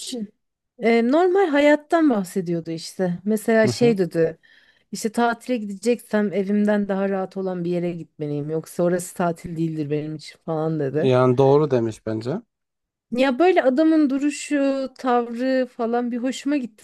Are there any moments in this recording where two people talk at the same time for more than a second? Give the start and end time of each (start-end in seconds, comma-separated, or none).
none